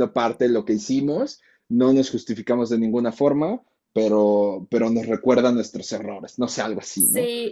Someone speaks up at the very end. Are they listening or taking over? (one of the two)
taking over